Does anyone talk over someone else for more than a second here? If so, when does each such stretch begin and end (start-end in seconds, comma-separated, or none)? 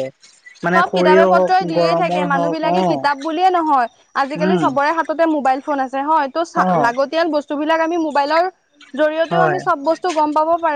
0.8-2.8